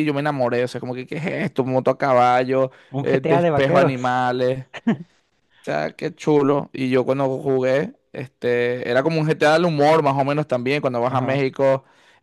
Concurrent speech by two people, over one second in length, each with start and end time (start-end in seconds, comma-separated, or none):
2.9-4.3